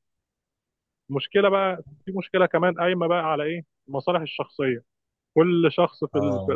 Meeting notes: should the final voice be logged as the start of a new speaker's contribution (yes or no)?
no